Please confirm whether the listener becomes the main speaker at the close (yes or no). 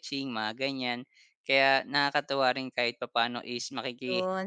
yes